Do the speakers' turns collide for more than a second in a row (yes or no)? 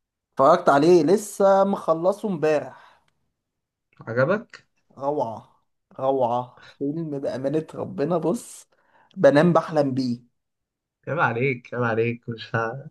no